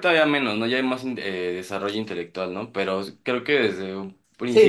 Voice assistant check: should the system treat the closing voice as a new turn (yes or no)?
yes